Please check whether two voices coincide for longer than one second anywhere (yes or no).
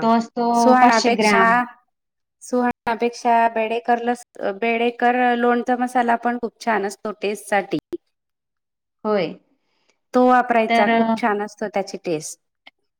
no